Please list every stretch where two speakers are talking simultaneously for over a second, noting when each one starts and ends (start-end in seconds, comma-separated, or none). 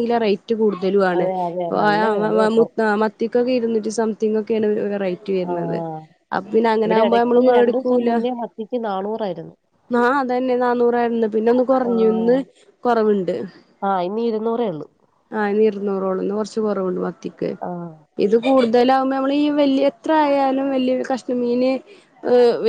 none